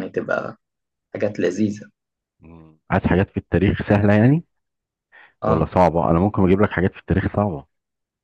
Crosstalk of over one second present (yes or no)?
no